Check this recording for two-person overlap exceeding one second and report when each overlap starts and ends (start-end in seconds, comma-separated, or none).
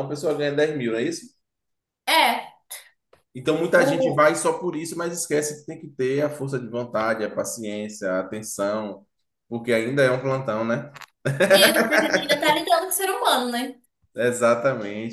none